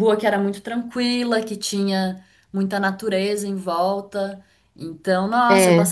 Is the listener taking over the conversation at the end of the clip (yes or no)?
no